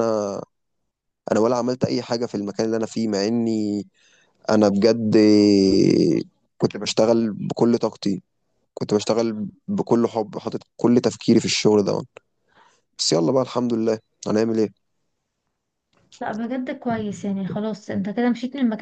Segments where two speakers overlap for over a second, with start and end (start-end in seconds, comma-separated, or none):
none